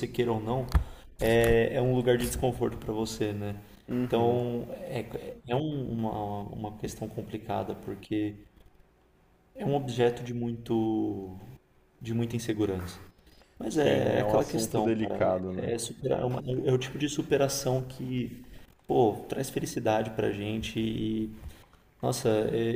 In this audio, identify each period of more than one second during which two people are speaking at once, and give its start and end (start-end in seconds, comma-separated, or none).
13.7-15.7